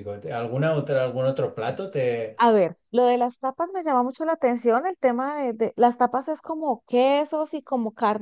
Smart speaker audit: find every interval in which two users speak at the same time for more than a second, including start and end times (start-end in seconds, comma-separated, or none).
none